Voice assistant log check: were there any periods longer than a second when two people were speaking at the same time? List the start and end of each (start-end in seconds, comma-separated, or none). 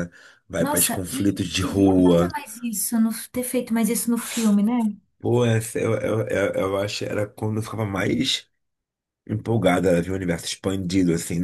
0.6-2.3